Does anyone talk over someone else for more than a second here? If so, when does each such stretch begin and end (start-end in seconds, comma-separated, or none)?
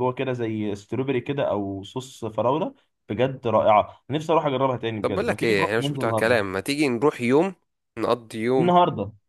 5.0-6.4